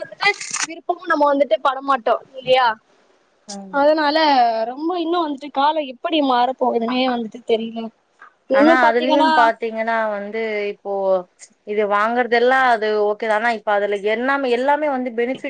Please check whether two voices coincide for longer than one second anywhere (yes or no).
no